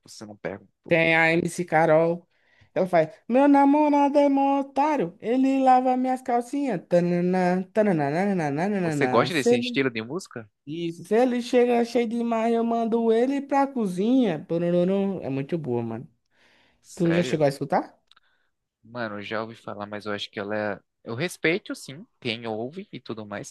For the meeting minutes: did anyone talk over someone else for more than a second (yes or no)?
no